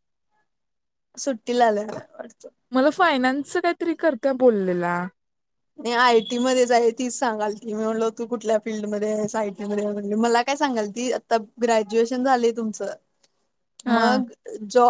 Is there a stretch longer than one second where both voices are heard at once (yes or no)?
no